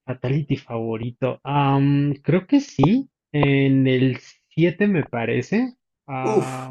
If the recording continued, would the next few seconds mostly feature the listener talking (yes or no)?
no